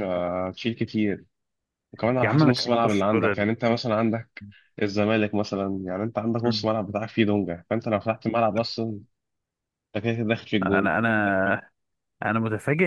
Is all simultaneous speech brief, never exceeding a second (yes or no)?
no